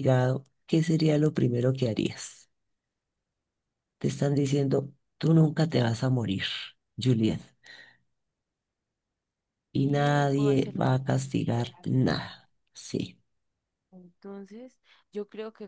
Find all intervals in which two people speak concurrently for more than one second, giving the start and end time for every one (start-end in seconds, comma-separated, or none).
9.8-11.0